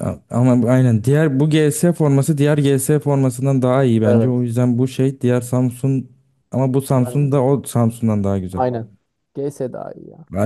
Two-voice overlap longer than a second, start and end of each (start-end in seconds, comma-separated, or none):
none